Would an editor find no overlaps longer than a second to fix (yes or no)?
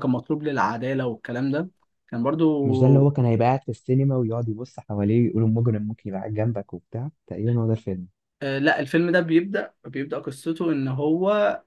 yes